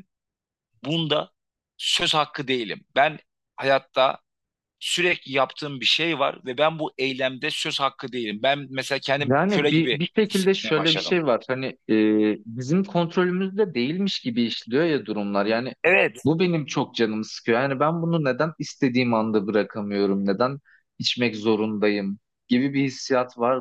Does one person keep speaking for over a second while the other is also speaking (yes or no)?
yes